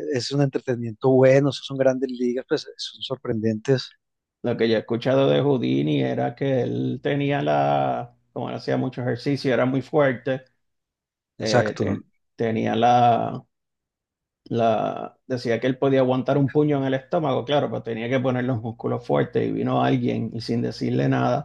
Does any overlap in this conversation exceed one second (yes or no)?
no